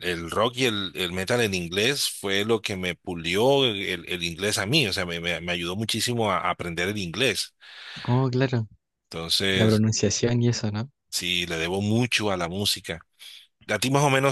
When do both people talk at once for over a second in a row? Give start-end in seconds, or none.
none